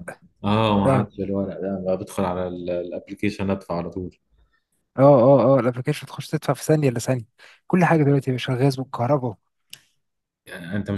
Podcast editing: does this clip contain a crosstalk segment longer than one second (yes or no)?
no